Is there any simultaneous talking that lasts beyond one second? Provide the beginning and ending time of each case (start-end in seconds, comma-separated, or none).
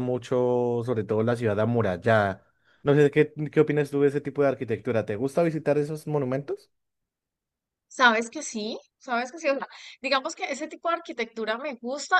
none